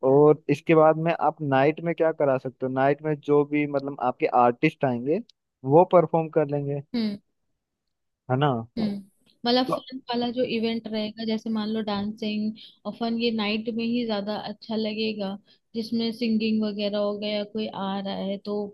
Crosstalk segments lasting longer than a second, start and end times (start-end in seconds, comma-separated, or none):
none